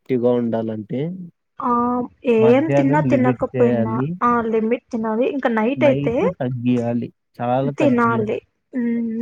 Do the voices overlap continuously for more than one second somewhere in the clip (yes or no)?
yes